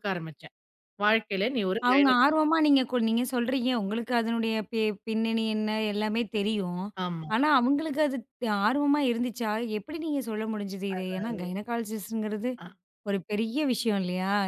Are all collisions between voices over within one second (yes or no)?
yes